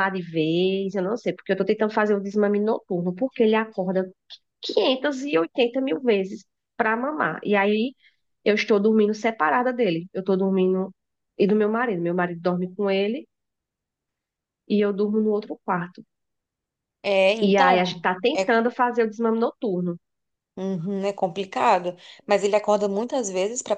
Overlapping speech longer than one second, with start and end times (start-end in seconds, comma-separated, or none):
17.5-18.8